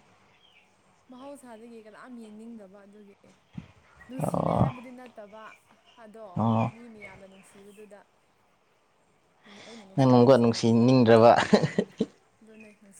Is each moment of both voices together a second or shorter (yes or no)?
no